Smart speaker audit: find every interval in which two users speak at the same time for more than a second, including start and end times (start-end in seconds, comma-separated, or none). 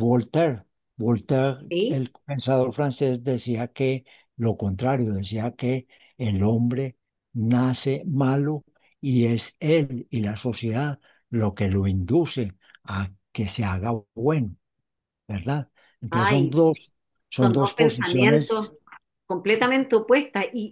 17.3-18.6